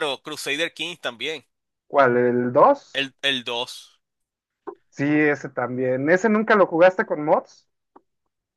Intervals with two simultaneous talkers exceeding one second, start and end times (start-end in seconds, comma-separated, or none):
none